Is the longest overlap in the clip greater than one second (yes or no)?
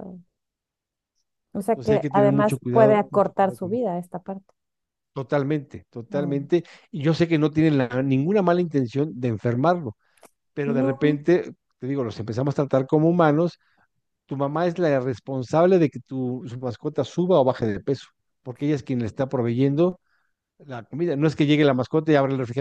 yes